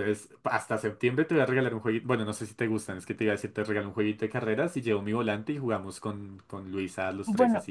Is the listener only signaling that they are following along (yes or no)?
no